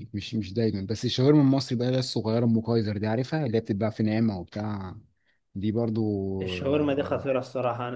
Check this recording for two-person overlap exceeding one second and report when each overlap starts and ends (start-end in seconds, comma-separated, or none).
none